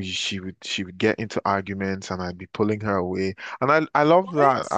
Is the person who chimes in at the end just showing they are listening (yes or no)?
yes